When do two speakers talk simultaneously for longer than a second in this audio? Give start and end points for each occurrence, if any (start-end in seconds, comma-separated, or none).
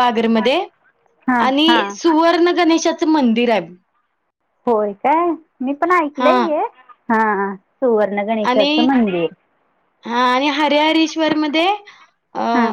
none